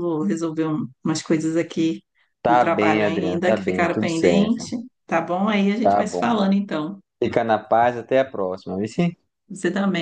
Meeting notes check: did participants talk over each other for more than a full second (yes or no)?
yes